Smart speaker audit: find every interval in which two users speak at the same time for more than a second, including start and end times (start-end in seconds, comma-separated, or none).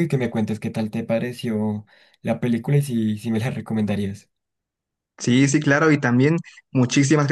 none